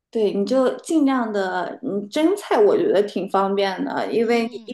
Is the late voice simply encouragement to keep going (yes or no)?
yes